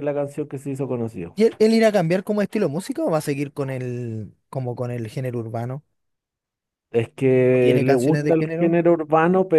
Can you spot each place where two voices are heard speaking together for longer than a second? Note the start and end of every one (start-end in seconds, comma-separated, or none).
7.5-8.8